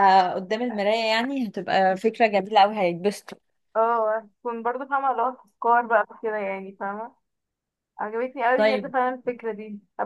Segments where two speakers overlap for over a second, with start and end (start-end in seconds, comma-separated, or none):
none